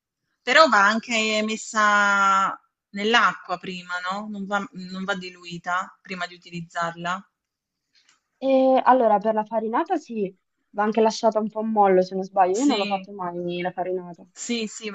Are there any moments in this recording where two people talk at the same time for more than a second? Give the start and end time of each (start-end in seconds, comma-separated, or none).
none